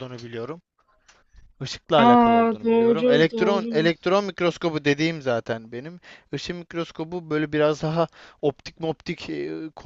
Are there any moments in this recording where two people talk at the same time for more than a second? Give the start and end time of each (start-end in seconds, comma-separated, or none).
2.0-3.9